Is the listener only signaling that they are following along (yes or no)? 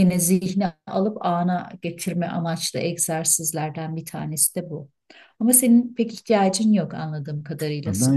no